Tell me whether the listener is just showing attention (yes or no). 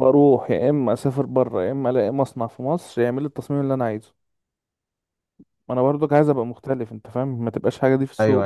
no